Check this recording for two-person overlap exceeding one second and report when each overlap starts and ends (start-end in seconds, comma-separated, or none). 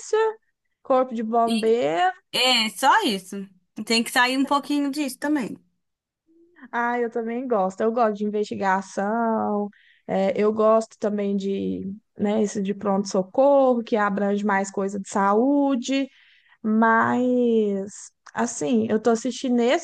none